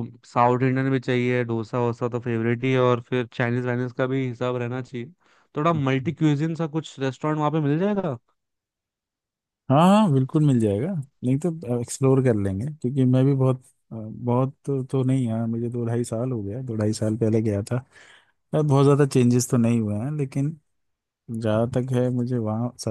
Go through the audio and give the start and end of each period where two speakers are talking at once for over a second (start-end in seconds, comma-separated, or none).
none